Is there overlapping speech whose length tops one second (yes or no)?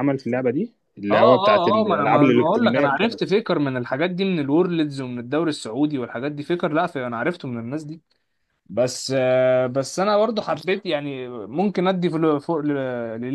yes